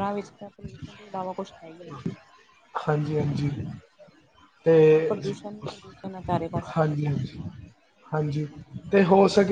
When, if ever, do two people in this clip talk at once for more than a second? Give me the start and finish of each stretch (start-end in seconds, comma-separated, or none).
none